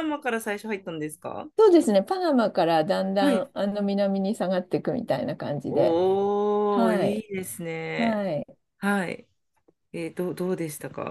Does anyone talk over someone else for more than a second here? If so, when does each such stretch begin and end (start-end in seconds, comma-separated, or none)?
none